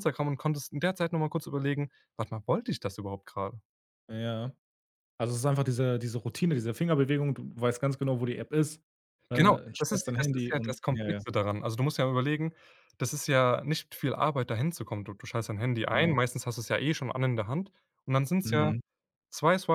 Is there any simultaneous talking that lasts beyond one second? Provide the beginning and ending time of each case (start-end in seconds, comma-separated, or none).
9.3-11.2